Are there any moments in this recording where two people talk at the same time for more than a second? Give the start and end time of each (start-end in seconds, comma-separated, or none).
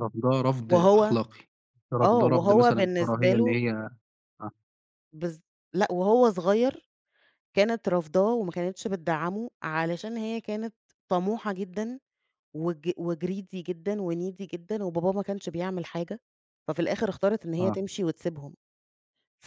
2.0-3.6